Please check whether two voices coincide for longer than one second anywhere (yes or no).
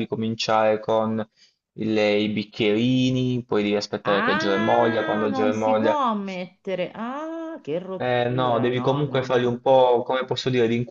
yes